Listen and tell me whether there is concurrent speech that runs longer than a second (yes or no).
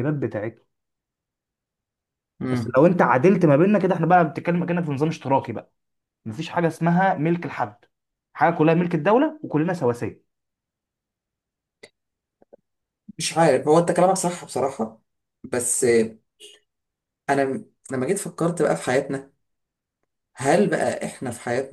no